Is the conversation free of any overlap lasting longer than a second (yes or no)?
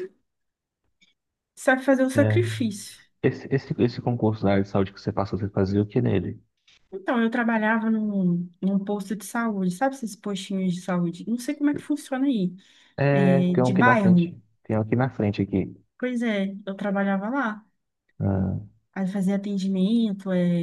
no